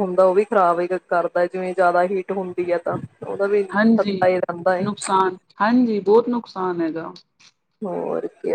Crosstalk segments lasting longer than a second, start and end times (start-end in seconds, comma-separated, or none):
none